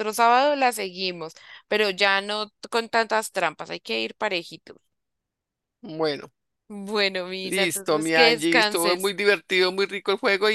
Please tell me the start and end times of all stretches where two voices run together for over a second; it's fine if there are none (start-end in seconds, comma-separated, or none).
7.4-9.1